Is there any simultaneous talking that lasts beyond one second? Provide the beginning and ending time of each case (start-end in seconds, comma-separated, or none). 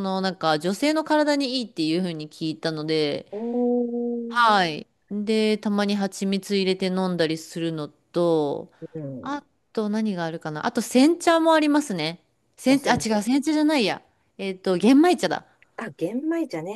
none